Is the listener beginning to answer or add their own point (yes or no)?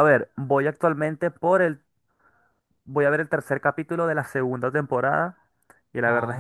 no